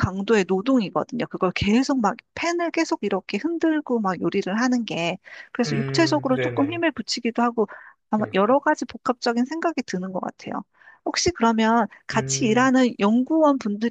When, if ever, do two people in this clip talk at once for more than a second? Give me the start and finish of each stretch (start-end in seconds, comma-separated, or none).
5.7-6.8